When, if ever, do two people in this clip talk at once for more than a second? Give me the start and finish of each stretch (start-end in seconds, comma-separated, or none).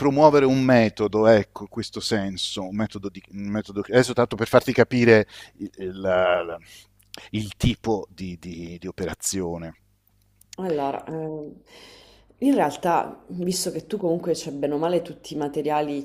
none